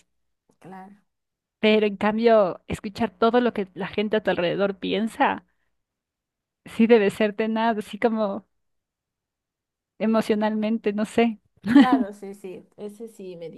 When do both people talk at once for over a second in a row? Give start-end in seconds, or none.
none